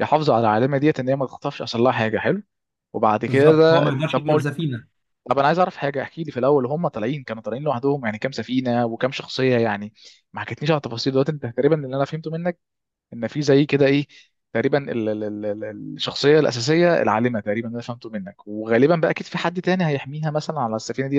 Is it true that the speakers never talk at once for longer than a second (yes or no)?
no